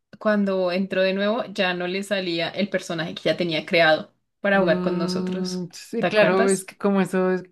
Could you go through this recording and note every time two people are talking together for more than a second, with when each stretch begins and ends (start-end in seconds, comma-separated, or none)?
4.5-6.7